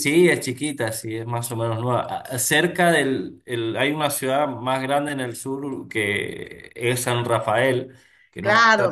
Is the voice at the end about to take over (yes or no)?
yes